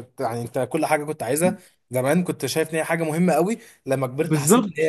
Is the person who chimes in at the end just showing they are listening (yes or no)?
no